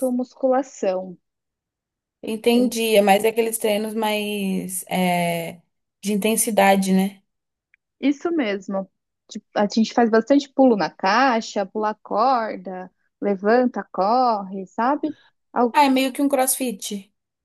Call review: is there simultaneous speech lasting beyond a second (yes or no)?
no